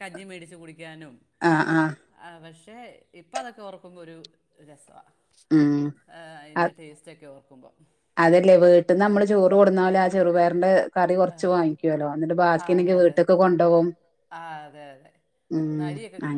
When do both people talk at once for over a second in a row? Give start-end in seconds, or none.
none